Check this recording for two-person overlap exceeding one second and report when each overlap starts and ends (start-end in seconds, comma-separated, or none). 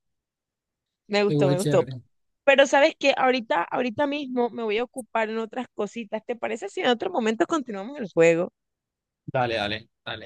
none